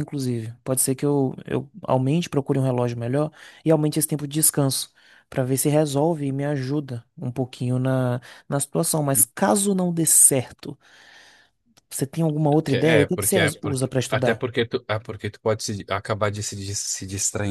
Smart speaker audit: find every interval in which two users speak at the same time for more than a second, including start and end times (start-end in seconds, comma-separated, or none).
12.7-14.4